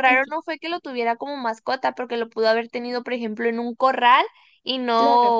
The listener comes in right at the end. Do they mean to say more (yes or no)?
no